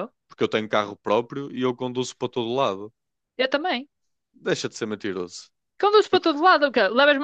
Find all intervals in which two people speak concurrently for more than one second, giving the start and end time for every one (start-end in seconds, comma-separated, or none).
none